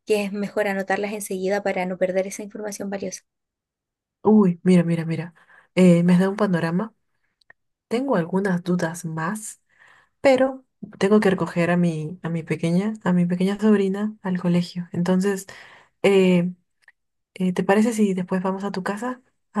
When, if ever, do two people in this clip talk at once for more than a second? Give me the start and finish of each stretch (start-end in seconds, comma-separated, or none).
none